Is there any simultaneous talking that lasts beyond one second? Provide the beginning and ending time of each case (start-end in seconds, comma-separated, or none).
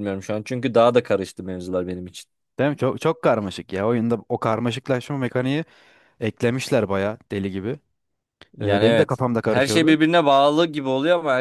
8.6-10.0